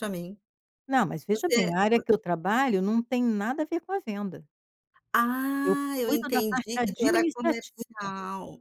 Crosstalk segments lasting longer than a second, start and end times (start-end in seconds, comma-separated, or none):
5.6-7.8